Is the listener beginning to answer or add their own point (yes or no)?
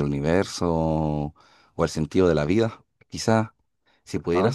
no